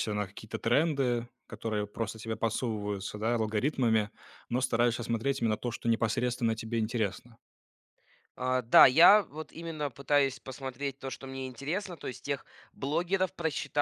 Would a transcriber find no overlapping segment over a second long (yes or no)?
yes